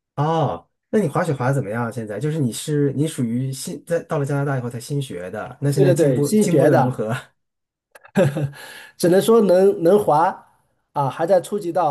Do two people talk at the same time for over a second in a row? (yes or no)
yes